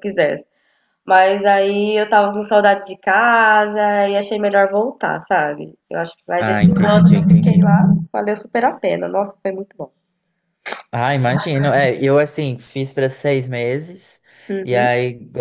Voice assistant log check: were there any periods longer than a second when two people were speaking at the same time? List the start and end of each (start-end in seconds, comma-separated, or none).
6.4-7.7